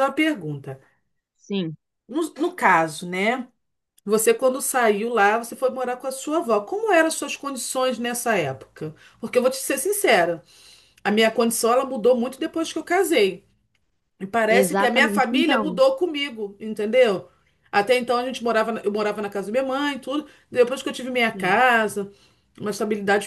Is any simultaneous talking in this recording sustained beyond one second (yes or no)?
yes